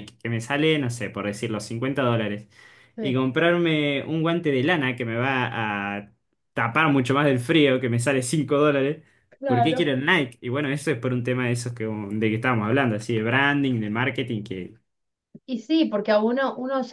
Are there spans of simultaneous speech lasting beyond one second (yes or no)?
no